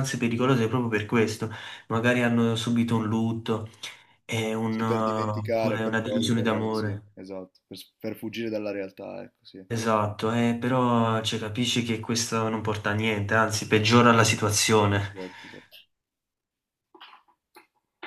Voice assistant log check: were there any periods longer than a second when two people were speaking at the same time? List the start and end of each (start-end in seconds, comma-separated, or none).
4.7-7.0